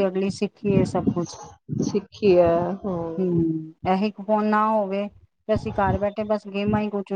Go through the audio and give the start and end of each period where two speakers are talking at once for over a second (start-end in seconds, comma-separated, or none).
none